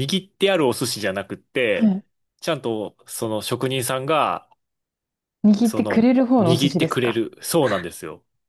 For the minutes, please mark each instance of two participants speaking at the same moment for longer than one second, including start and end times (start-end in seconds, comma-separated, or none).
5.6-7.2